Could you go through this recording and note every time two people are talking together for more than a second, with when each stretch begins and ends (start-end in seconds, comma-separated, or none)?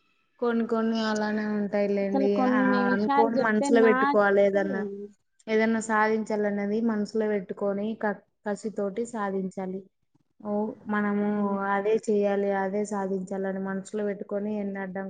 2.0-4.2